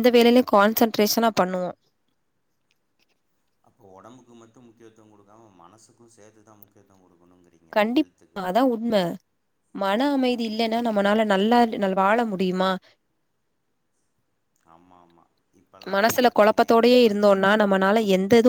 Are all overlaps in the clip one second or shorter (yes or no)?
no